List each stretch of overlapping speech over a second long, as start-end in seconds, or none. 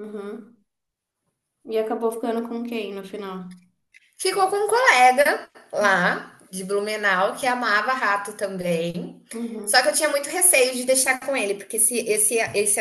none